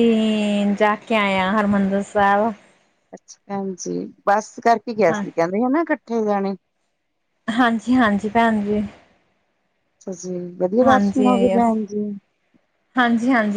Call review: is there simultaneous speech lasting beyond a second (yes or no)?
no